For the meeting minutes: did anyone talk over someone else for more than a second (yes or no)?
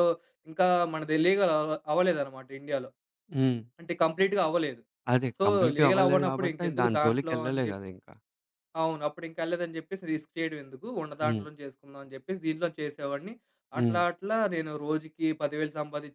yes